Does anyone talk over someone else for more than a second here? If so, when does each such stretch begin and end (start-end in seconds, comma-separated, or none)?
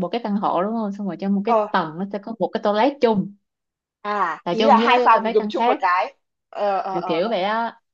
4.5-5.8